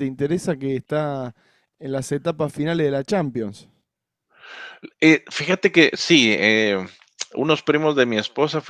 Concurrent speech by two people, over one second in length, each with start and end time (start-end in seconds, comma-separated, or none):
none